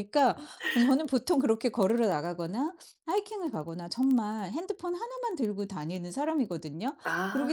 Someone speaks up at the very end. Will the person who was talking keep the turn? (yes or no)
yes